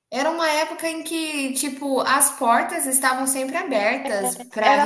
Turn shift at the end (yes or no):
no